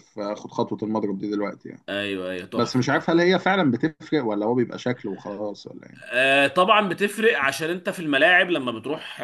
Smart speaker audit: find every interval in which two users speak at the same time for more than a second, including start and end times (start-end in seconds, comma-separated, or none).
none